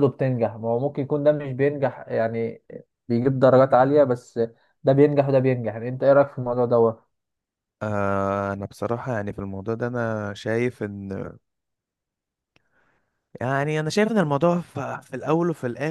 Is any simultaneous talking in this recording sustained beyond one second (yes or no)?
no